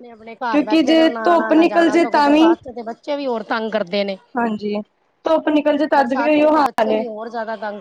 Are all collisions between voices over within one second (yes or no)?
no